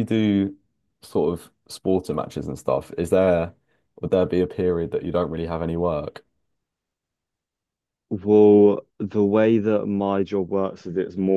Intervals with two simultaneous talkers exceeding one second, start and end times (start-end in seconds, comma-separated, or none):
none